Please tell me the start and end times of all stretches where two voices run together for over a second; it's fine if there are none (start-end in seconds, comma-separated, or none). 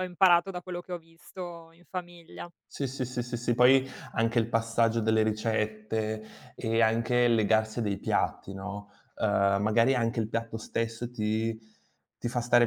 none